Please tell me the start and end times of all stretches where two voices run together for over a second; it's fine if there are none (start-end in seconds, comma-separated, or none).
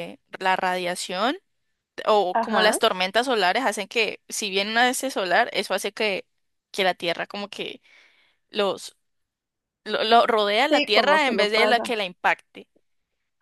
10.7-11.9